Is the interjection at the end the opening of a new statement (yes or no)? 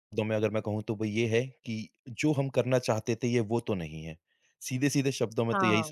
no